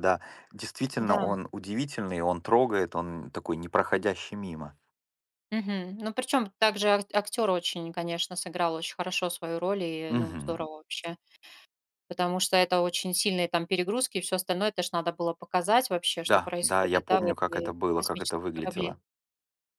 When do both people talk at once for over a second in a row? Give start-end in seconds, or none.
16.2-18.9